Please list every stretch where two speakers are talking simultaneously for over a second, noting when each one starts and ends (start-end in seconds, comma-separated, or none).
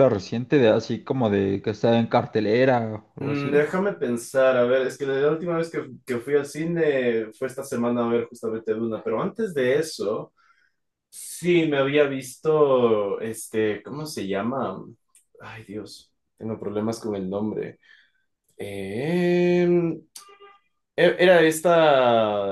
none